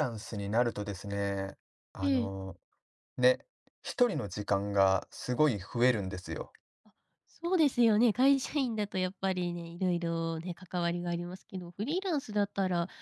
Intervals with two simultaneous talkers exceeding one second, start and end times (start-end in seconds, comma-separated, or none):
none